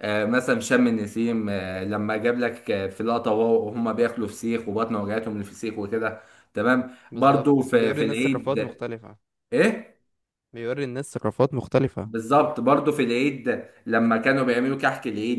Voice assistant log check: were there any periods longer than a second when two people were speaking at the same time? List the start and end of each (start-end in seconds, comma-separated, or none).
7.1-8.6